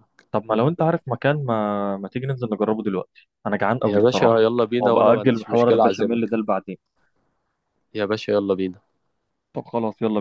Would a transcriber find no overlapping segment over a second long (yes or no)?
no